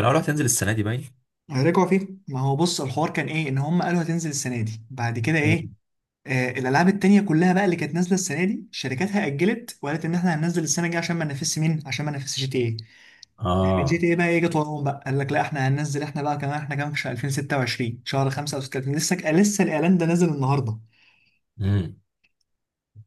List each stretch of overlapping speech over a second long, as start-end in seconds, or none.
none